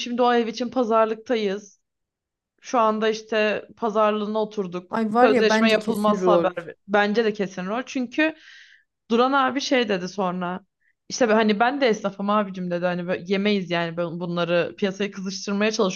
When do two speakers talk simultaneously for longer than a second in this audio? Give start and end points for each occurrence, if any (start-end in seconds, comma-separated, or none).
4.9-6.5